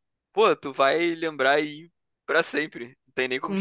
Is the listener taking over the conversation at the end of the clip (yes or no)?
yes